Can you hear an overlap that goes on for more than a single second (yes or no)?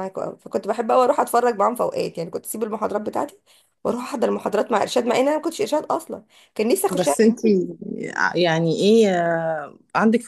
no